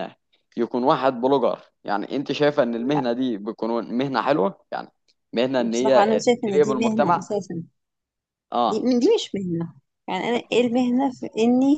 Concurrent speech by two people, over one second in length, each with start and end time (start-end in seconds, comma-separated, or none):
5.7-7.3